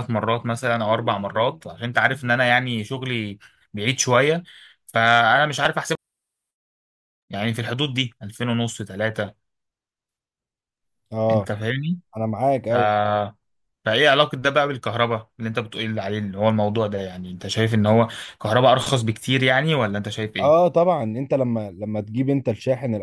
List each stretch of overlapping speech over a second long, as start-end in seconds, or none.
none